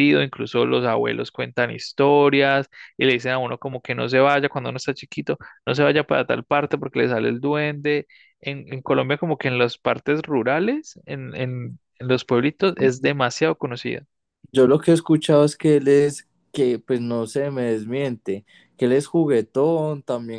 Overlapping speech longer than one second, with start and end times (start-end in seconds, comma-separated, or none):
none